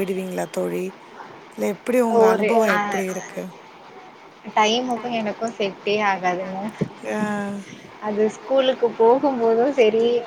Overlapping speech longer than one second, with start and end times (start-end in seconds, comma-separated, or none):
none